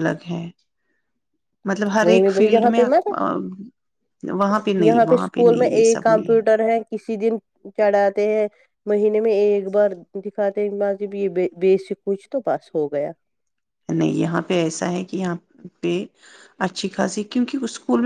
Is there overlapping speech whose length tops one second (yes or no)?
yes